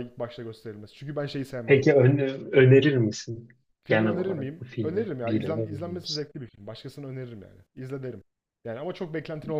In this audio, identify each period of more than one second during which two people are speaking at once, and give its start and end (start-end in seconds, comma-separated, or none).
3.9-6.3